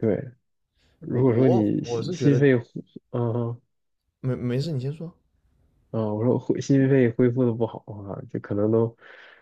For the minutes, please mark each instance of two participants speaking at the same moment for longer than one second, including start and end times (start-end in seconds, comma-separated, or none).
1.1-2.4